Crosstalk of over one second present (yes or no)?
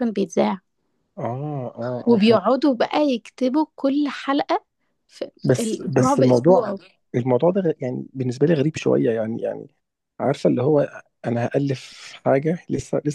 yes